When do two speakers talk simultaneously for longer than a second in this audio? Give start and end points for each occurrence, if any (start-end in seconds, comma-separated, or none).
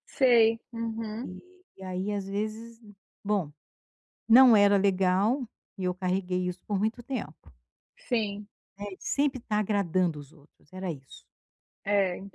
none